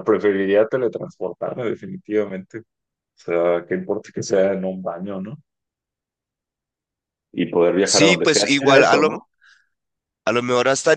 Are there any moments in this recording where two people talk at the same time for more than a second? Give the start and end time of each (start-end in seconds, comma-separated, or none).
7.8-9.1